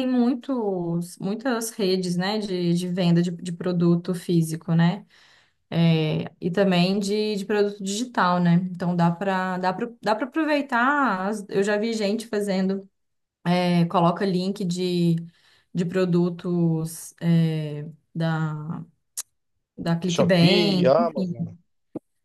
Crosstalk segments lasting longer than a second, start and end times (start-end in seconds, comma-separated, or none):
20.0-21.3